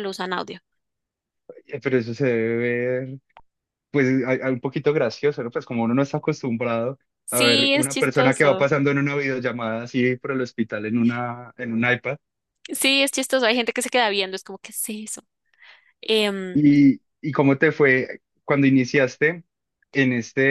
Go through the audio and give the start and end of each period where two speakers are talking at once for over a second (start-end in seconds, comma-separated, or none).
7.2-8.7